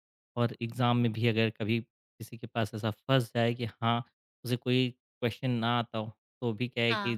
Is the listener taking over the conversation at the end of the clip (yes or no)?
no